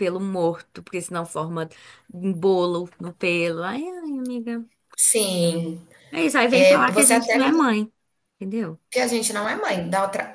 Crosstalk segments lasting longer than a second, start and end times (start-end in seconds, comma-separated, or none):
6.5-7.7